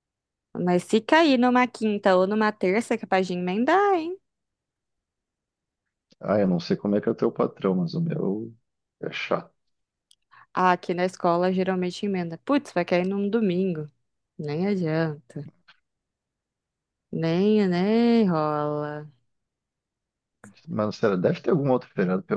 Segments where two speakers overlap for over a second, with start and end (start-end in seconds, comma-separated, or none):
none